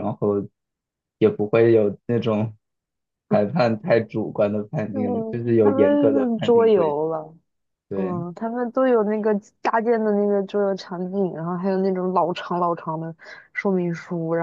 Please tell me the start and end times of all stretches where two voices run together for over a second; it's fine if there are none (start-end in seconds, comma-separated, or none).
4.9-7.0